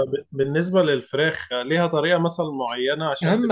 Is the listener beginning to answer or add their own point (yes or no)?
yes